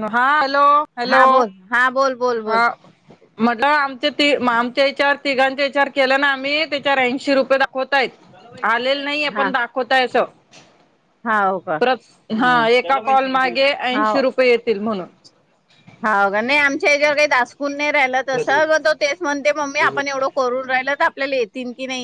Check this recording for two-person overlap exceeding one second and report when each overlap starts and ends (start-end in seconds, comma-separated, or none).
none